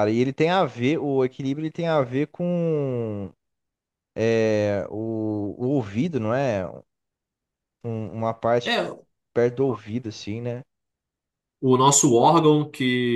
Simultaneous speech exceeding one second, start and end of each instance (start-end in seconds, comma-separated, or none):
none